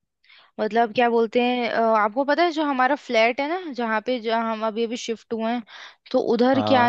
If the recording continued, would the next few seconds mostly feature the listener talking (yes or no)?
no